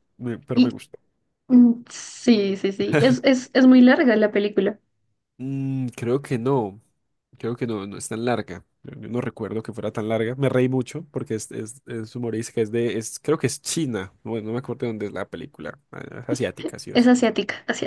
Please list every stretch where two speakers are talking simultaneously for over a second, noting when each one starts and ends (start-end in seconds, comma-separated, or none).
none